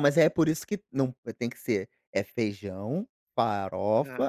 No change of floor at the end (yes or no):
yes